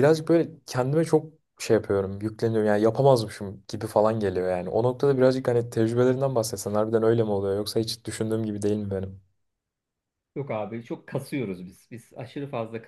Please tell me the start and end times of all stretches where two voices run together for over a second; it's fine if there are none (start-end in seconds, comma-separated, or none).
none